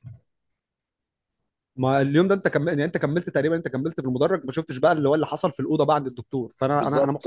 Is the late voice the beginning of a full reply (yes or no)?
no